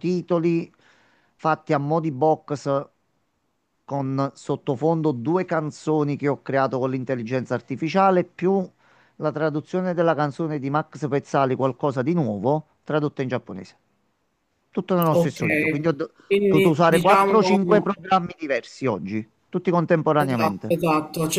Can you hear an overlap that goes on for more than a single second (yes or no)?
yes